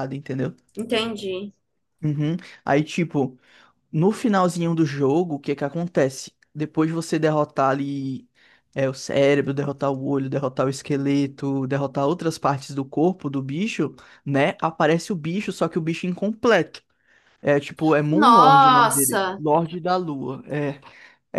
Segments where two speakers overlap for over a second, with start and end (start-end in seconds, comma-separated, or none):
18.1-19.4